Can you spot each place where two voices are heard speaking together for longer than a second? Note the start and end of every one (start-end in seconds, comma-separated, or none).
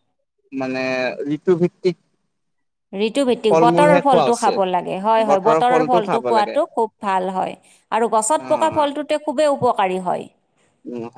none